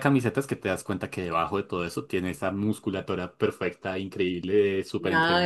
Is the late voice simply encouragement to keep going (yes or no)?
no